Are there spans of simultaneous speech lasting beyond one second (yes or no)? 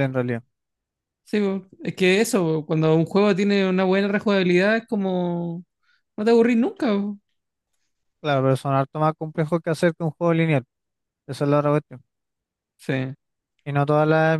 no